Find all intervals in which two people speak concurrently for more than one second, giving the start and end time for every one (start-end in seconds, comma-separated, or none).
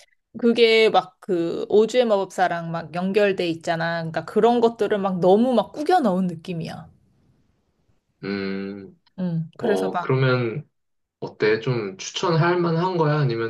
none